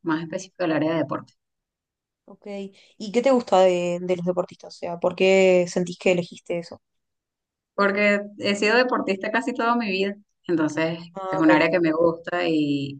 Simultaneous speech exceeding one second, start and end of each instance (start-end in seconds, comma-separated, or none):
none